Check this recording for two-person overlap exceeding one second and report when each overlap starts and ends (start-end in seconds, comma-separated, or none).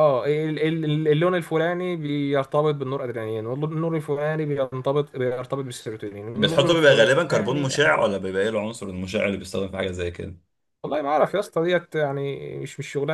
6.4-7.8